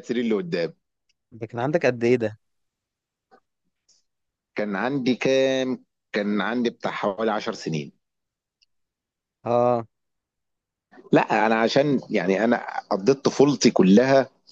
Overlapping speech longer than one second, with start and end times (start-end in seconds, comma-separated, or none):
none